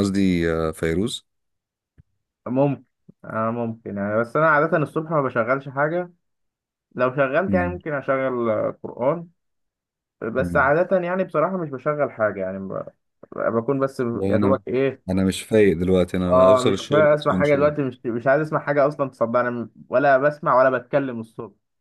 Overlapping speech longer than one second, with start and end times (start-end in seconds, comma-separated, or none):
16.3-17.7